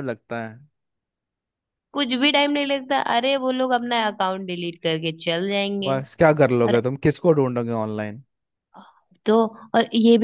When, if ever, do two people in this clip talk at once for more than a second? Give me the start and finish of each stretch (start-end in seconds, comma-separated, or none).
none